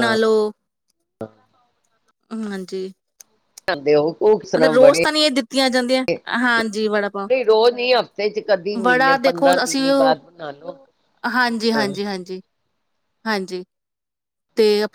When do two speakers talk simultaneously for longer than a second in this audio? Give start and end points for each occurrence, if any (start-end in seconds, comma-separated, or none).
8.8-10.2